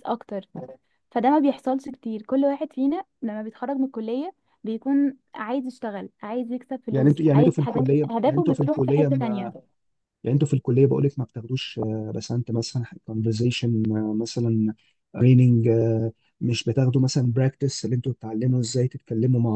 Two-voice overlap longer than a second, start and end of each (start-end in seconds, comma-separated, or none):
6.9-9.1